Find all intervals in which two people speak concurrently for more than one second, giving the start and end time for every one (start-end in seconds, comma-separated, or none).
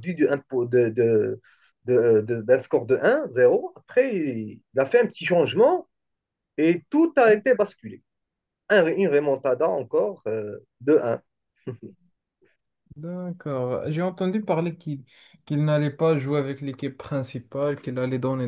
none